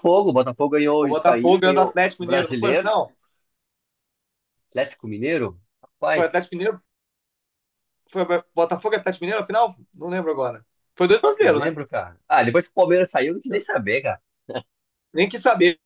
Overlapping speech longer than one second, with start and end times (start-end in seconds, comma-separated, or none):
1.0-2.9